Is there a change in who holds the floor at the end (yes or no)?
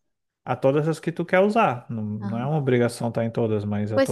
yes